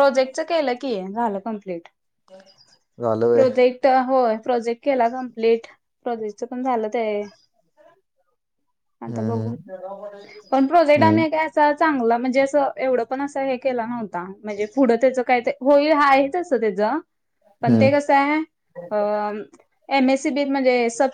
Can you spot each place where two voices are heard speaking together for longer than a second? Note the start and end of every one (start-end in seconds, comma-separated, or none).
none